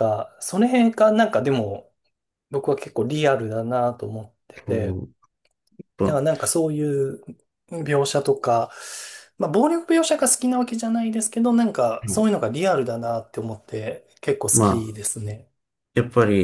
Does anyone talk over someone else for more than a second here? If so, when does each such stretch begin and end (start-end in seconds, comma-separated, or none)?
none